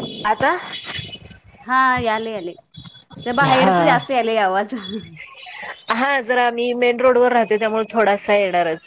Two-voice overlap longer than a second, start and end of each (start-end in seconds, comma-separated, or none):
none